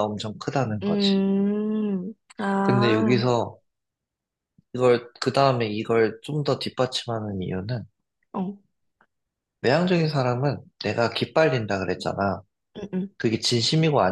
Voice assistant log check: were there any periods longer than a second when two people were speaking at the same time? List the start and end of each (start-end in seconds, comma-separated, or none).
none